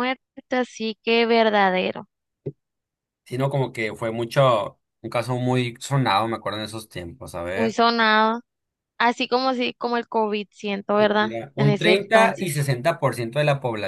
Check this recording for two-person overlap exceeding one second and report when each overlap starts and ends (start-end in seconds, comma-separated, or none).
11.3-12.6